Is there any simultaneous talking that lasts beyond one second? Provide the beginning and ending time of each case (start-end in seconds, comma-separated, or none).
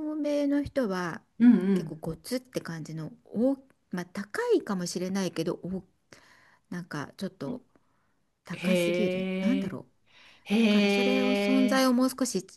8.5-9.8